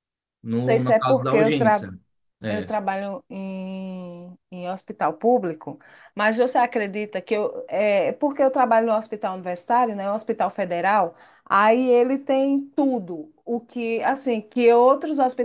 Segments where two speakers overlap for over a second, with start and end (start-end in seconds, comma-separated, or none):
0.6-1.8